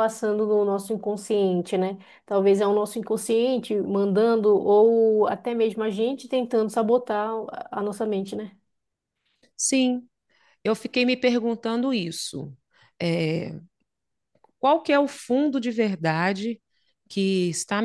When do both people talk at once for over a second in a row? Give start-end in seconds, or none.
none